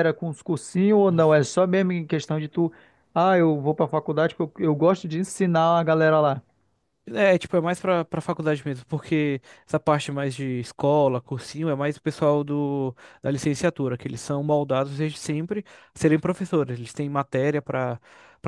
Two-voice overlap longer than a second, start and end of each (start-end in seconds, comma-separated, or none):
none